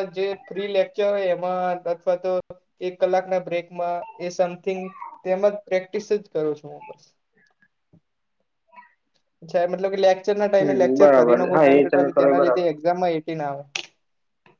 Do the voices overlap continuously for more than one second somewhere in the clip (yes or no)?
yes